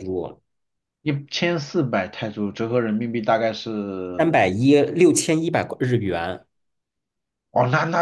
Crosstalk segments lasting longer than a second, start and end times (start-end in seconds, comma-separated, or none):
none